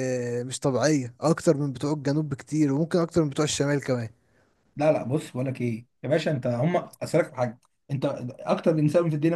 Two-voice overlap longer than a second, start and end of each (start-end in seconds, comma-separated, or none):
none